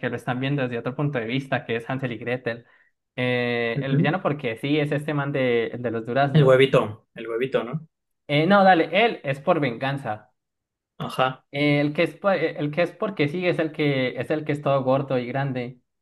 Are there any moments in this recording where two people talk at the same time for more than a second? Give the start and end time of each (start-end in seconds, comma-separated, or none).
none